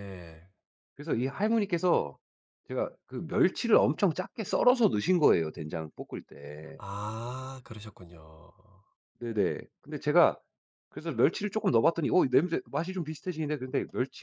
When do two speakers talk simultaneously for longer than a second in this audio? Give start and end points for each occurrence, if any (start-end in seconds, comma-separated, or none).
none